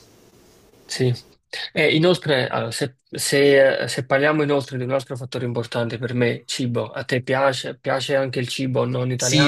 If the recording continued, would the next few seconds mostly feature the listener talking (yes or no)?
yes